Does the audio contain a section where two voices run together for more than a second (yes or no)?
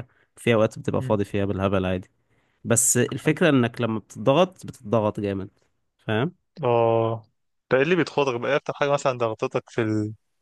no